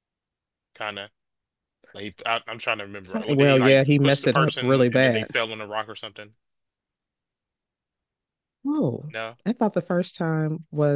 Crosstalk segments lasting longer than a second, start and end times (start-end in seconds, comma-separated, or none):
3.3-5.3